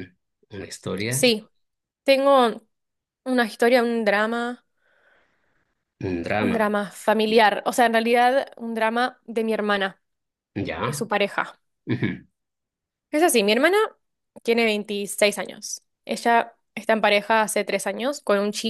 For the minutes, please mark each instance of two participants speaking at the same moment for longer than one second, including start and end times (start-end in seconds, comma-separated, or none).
none